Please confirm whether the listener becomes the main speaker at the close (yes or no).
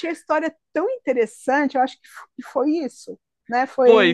yes